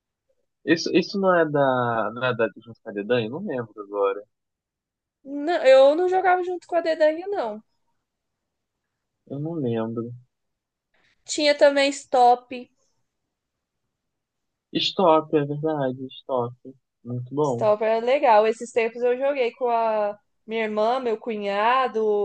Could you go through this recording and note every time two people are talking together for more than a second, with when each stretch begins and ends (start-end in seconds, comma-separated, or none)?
none